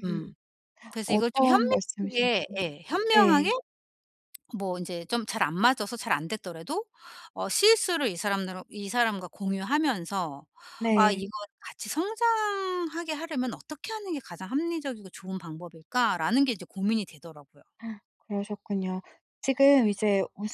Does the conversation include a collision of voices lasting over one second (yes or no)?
yes